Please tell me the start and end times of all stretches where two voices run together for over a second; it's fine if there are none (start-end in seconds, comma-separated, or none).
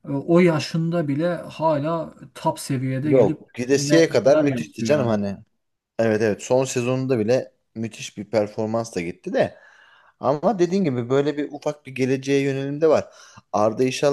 3.0-5.2